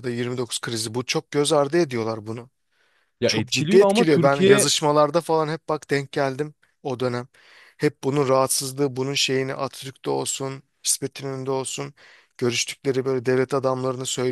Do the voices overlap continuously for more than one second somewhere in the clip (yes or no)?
yes